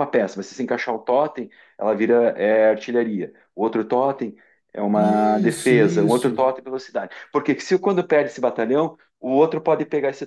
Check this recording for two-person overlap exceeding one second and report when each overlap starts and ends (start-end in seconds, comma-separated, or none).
4.9-6.5